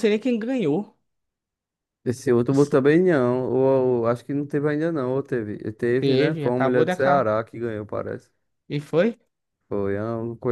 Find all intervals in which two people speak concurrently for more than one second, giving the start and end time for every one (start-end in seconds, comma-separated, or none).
6.0-7.3